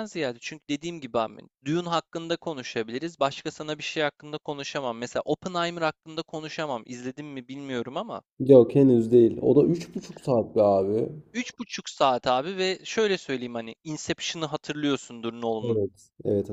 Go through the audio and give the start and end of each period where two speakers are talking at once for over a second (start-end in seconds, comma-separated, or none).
none